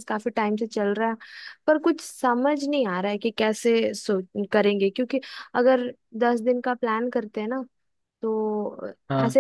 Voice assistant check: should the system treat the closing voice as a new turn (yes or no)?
no